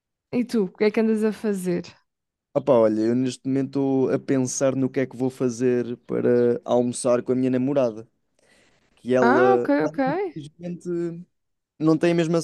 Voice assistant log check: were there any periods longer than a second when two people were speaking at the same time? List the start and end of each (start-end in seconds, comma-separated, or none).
none